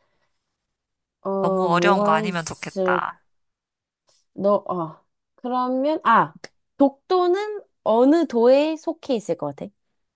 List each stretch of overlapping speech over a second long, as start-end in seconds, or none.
1.4-3.0